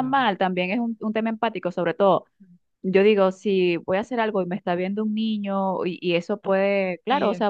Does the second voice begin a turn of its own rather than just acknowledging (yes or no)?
no